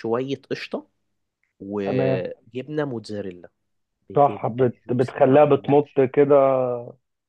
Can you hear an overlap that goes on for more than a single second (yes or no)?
yes